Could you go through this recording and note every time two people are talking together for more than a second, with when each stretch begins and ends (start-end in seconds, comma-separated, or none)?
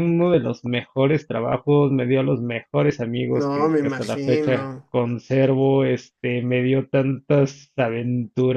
3.3-4.9